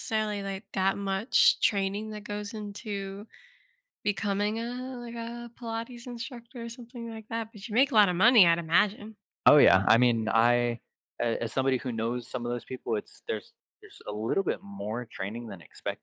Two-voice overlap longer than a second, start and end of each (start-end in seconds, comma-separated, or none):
none